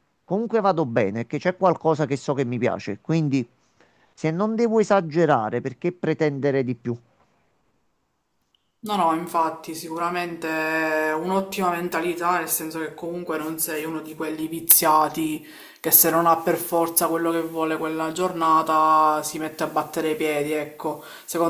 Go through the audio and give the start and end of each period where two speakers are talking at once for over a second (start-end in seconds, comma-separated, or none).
none